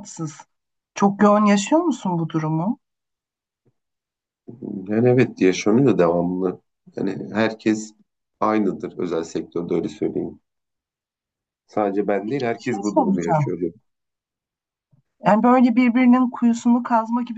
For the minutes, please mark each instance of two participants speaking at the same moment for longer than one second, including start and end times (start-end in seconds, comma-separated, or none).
12.2-13.5